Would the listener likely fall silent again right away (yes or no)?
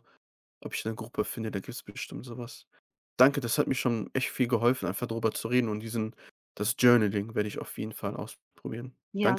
no